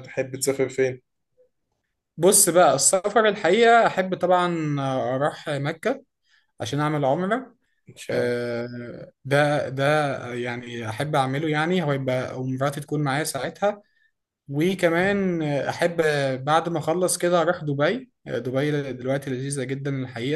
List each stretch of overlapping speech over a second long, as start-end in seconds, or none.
none